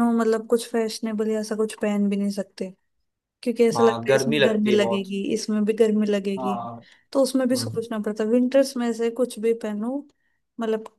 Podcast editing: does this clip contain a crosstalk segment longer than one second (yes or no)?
yes